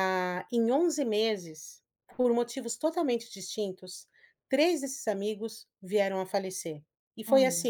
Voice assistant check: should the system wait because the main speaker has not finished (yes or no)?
yes